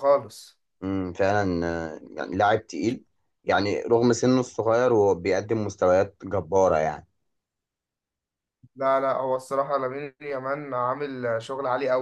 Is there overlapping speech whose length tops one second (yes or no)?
no